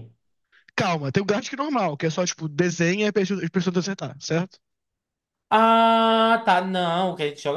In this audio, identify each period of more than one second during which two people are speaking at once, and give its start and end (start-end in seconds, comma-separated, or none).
none